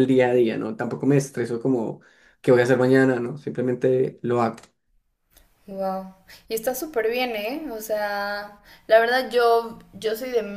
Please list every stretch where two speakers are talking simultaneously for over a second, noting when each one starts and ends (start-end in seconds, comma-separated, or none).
none